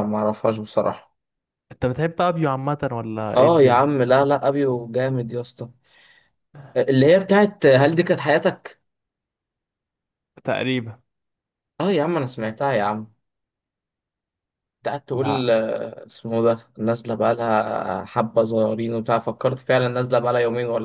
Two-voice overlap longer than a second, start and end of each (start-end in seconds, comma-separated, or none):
none